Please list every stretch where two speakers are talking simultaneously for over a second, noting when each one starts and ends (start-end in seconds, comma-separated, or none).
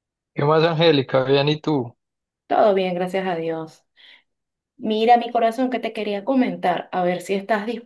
none